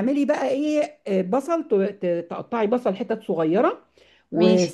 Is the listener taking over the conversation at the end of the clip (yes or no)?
no